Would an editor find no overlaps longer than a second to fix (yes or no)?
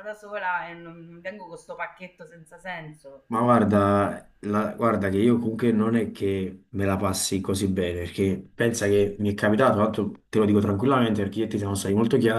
yes